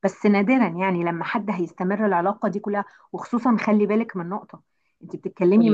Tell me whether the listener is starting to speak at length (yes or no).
no